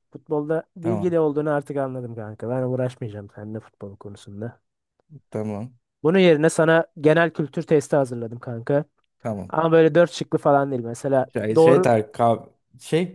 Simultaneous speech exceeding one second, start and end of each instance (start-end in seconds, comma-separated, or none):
none